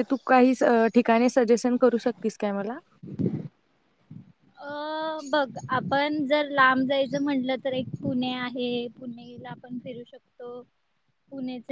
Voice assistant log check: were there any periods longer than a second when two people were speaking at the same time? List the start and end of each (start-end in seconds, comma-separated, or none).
none